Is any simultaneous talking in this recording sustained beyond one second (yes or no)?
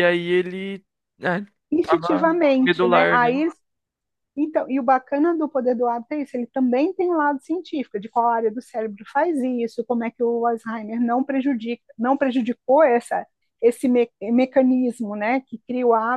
yes